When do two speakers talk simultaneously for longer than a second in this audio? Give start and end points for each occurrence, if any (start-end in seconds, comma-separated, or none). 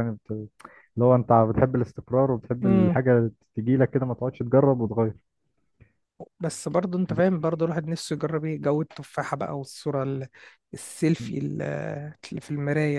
none